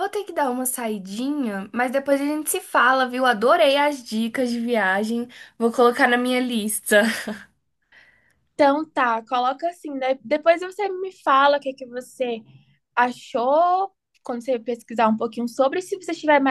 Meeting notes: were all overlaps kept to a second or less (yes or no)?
yes